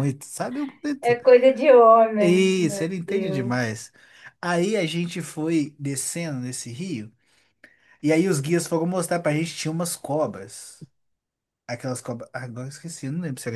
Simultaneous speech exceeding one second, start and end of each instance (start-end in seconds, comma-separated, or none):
2.2-3.5